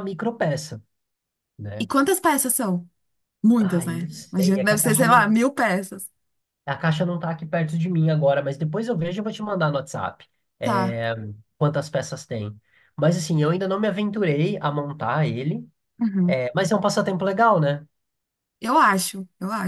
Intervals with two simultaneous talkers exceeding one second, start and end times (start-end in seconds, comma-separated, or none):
3.6-5.3